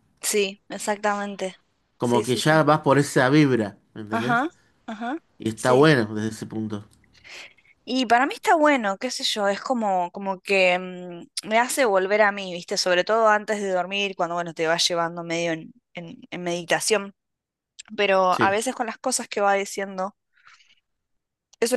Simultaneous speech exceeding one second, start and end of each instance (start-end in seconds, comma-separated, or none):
none